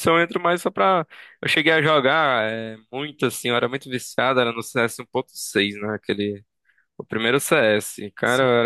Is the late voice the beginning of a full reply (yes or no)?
no